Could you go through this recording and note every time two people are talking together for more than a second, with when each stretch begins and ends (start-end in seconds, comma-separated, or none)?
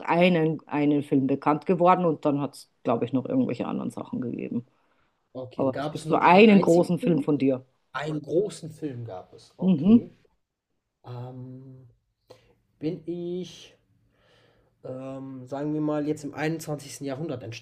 5.5-7.3